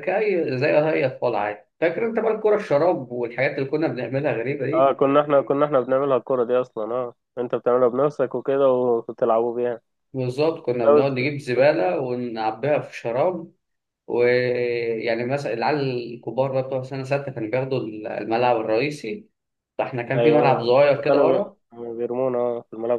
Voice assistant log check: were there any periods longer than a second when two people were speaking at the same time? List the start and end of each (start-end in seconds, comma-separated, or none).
20.1-21.6